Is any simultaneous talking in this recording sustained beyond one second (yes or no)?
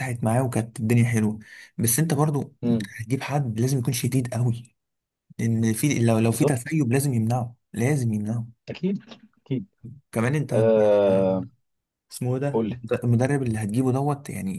no